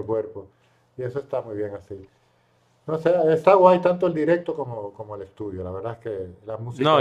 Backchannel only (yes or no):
no